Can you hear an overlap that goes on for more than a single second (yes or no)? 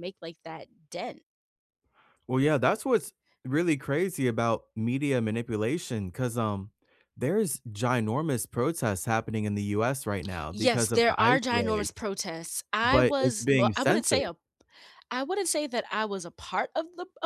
yes